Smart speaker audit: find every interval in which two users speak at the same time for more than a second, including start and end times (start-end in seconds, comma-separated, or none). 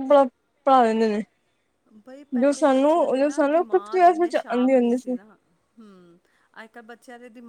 2.4-5.0